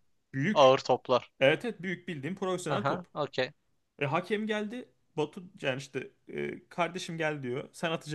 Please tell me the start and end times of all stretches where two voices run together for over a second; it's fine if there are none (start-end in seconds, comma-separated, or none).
none